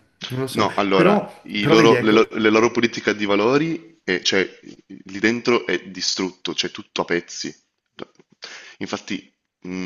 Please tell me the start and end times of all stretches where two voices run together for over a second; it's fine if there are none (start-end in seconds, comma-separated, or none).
0.5-2.2